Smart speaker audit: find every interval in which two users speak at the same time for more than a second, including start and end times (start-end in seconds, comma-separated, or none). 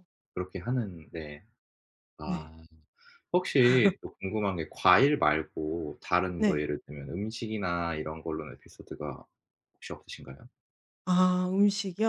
none